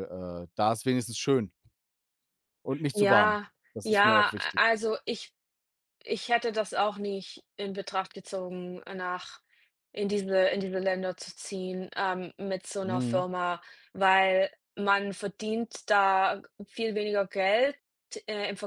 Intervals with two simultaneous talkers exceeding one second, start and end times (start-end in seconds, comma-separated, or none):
2.9-4.6